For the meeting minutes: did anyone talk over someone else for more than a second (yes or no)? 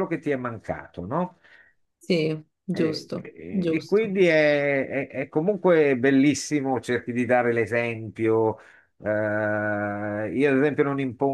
yes